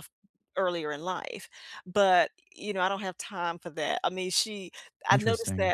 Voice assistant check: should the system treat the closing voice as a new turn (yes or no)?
no